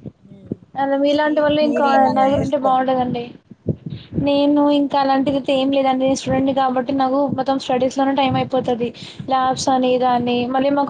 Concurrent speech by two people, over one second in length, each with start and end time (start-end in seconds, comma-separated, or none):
1.2-3.1